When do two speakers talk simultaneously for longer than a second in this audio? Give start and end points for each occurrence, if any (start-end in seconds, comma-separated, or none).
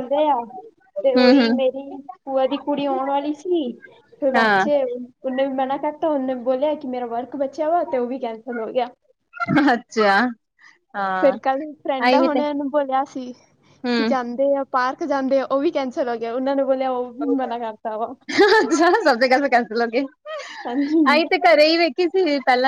none